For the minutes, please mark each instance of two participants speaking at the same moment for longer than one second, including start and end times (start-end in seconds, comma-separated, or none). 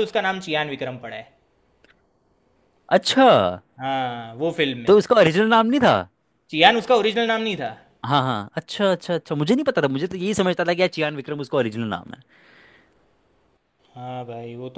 none